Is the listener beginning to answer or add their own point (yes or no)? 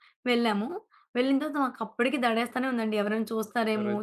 yes